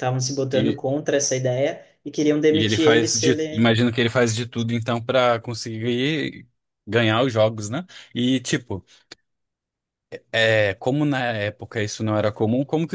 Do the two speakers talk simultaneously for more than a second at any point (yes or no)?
yes